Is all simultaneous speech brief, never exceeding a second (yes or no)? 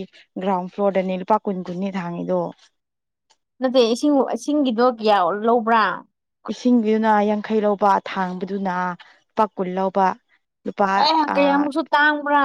yes